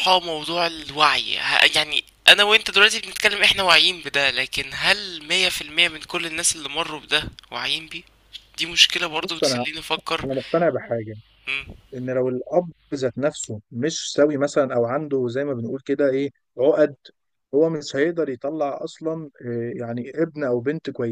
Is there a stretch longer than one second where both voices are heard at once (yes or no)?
no